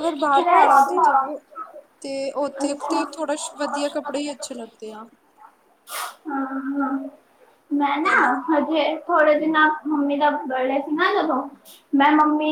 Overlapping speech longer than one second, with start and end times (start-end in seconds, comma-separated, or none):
none